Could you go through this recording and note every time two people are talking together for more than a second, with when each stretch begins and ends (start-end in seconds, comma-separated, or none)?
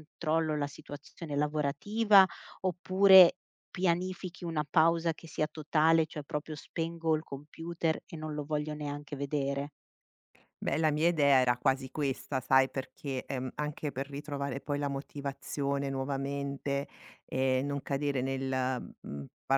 none